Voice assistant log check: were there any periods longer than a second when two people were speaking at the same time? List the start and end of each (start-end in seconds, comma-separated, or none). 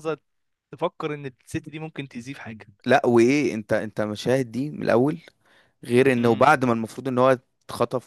none